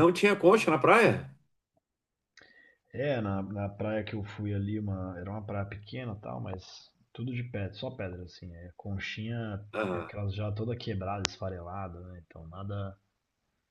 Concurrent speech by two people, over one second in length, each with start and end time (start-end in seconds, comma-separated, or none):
none